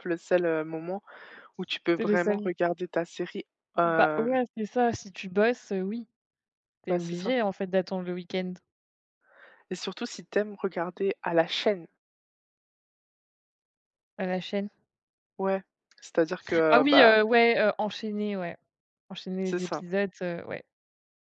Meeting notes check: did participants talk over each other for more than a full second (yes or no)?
no